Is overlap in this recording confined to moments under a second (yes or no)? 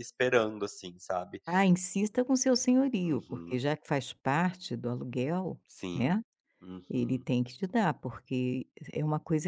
yes